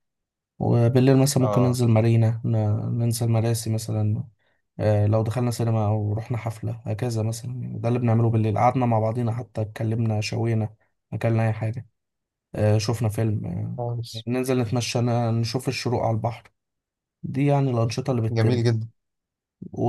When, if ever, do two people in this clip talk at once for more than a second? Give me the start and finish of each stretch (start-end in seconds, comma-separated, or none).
none